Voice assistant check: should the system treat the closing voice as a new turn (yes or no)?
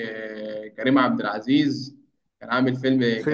no